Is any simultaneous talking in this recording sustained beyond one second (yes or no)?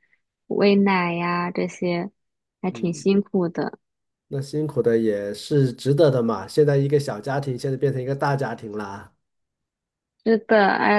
no